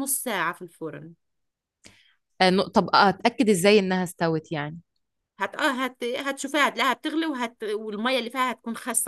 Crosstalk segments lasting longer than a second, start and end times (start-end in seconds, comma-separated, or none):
none